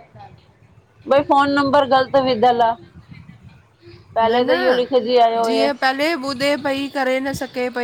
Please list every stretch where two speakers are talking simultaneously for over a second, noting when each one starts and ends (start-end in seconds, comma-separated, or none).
4.2-6.1